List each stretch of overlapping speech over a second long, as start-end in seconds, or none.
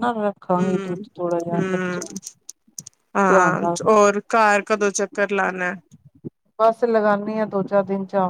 0.6-2.0